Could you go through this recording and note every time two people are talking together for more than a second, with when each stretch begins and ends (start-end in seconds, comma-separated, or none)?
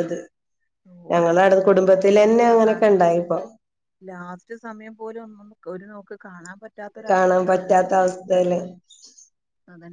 1.1-3.0